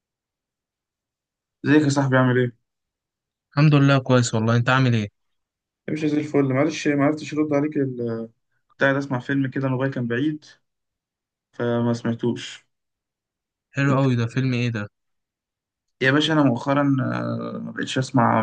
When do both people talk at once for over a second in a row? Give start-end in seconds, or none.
none